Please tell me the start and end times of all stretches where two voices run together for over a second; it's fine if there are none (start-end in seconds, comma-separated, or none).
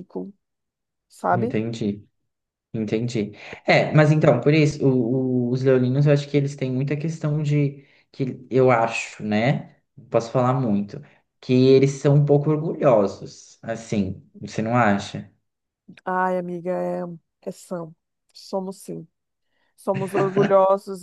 none